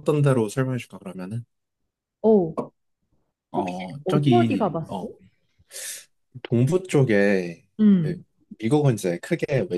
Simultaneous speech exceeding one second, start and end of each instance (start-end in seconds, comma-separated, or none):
3.6-5.1